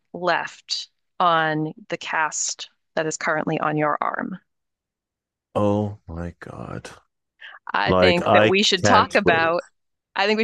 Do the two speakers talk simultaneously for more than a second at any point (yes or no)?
yes